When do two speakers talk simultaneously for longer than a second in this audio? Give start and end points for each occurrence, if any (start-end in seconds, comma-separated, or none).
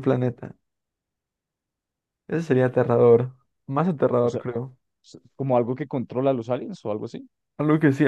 none